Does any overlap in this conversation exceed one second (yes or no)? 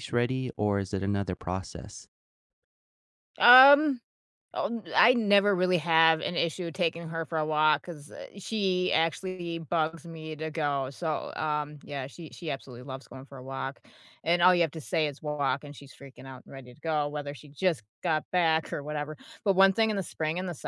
no